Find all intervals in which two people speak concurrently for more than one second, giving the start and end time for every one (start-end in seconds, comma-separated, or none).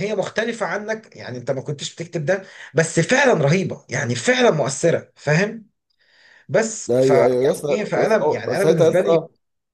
6.9-9.2